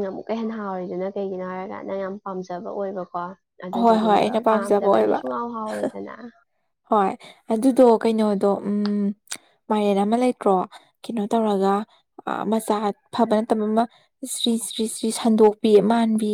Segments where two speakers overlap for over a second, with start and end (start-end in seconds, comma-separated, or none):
3.8-5.2